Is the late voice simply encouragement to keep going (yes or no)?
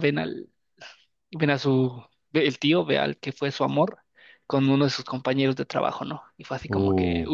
no